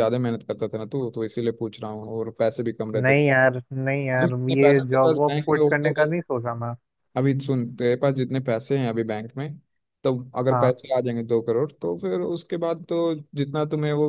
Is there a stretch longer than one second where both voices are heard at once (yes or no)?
yes